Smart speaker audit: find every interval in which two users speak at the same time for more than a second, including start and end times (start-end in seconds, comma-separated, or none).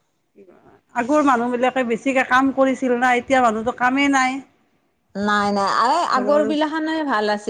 none